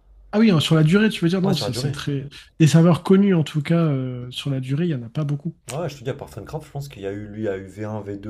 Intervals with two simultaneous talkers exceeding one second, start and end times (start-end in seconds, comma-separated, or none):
none